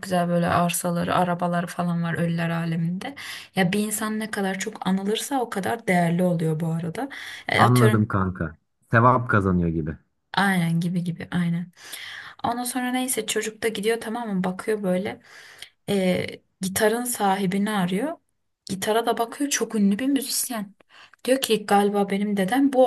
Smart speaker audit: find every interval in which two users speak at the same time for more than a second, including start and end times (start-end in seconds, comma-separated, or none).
none